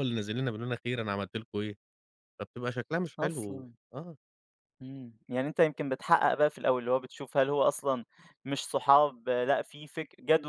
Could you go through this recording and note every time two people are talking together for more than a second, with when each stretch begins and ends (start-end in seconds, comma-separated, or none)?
none